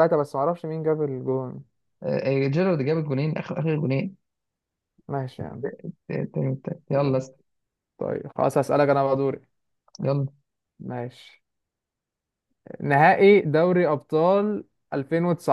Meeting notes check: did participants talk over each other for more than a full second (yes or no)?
no